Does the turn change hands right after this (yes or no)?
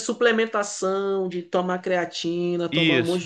no